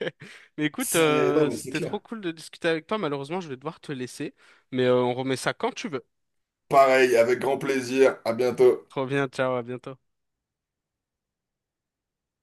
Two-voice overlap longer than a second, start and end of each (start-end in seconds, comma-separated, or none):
0.8-2.0